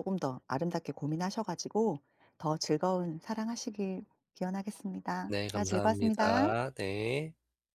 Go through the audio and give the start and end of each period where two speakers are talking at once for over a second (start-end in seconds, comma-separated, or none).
5.2-6.5